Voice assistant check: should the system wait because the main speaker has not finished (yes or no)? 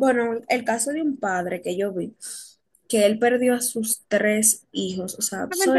no